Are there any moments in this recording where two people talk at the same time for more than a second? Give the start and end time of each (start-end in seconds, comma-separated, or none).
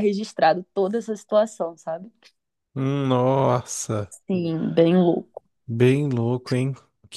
none